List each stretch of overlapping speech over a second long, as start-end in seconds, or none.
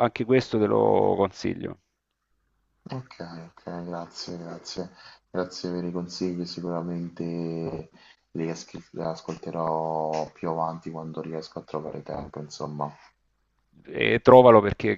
none